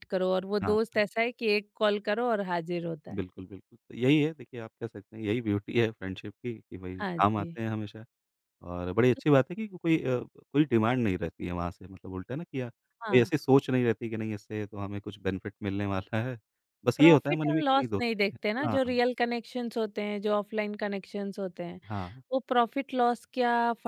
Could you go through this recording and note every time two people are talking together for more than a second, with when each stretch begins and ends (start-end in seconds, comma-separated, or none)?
17.0-19.0